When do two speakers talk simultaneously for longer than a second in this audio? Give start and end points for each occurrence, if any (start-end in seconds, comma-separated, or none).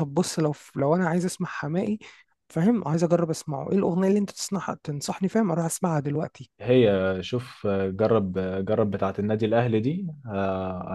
none